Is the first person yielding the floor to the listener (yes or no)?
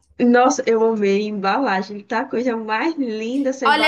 yes